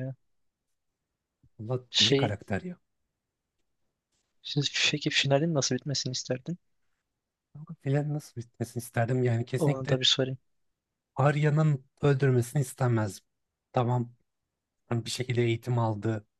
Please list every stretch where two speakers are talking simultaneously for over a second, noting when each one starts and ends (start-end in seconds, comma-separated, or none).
none